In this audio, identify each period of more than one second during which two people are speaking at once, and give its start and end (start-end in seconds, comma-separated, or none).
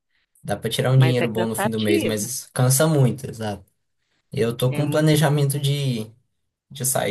0.9-2.3